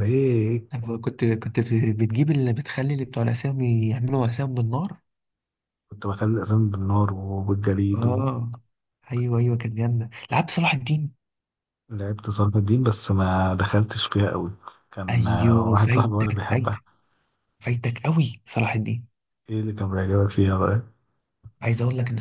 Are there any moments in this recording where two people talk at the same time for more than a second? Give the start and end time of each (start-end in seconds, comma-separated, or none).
15.1-16.8